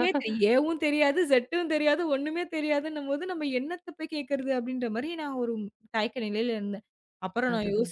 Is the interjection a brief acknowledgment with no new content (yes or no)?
yes